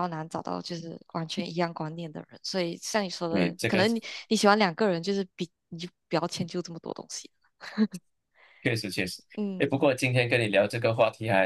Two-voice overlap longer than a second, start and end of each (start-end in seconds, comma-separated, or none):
none